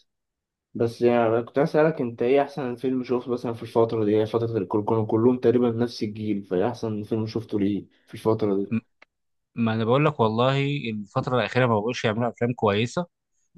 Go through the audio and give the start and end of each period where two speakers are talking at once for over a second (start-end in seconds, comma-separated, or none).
none